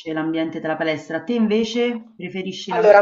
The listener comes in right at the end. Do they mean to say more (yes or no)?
yes